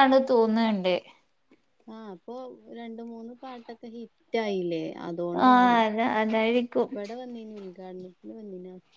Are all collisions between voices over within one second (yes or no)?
yes